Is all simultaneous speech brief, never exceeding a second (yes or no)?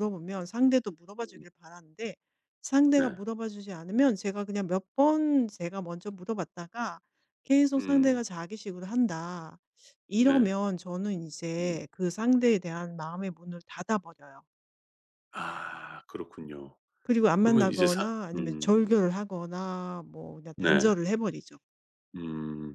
no